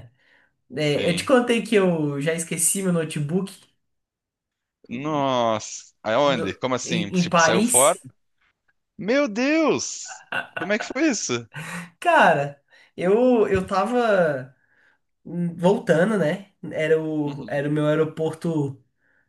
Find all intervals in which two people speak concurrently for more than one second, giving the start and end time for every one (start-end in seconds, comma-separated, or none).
6.2-8.0